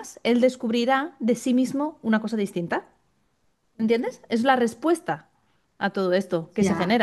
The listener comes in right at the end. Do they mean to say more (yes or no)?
yes